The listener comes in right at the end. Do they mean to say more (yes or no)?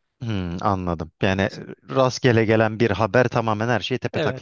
yes